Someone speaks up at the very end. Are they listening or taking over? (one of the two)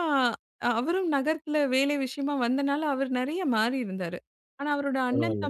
listening